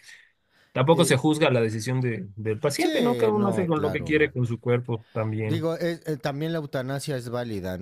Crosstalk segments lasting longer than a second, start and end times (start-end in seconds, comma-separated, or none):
2.8-4.1